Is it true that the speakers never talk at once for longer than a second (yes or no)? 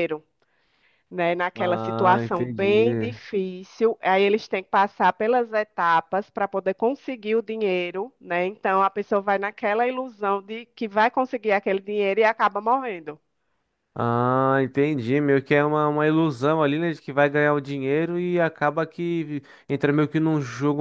no